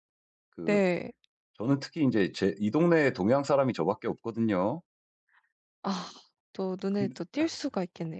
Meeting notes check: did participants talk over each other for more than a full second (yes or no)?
no